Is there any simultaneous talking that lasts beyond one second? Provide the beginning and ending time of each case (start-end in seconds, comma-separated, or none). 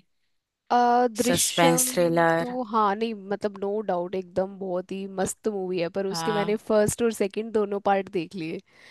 1.2-2.6